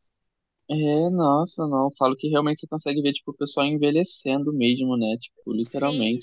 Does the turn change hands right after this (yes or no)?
yes